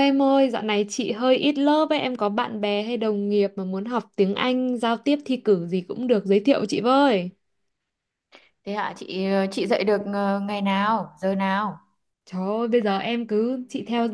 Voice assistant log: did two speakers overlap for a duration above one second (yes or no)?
no